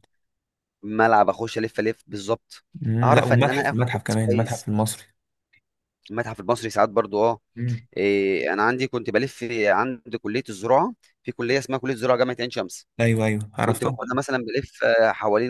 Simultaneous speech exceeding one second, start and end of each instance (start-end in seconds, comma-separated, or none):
3.0-4.7